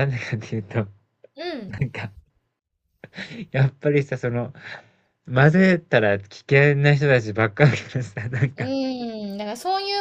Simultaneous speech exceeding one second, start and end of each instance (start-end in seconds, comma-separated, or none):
none